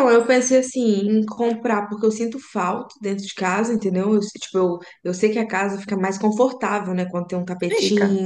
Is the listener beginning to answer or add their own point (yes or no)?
no